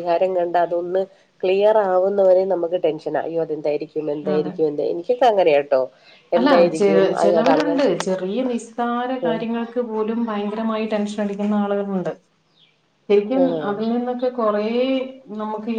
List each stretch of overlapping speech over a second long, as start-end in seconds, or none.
none